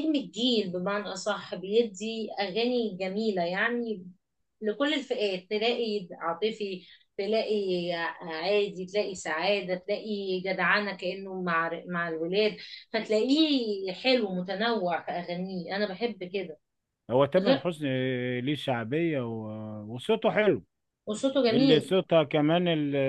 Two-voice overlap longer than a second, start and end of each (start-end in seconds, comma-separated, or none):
none